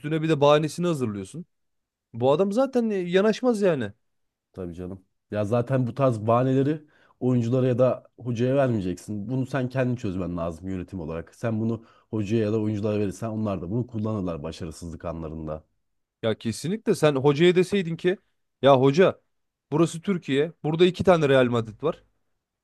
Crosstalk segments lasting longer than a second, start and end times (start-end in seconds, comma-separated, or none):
none